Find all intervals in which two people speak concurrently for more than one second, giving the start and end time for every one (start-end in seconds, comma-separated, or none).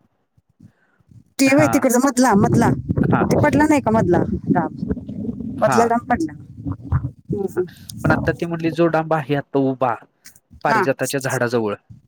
none